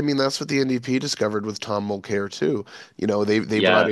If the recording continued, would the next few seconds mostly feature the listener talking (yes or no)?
no